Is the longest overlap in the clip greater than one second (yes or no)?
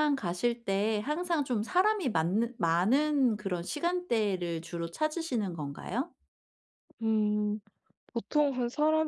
no